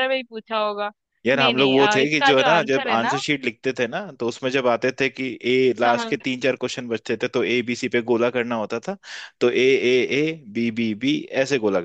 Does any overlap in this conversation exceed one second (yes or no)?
yes